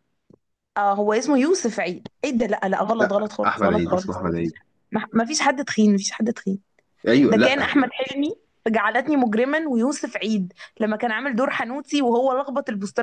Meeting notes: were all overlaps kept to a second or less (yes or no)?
no